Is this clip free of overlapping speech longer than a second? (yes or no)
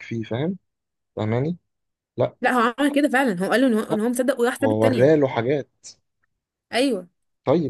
yes